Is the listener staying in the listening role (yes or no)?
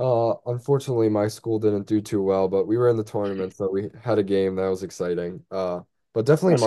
yes